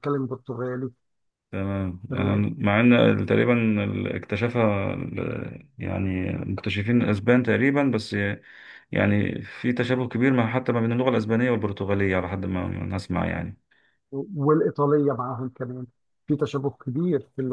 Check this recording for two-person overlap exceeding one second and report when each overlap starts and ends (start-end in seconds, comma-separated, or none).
none